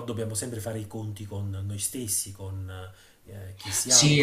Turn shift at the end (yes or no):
yes